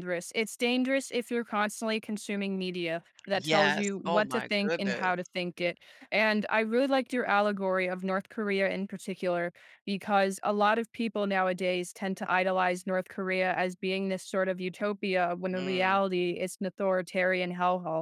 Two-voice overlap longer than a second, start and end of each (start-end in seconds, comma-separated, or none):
3.4-5.1